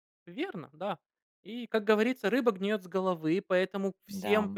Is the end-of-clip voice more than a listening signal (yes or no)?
no